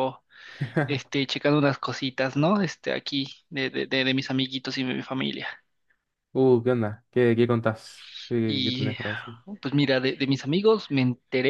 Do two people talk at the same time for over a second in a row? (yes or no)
no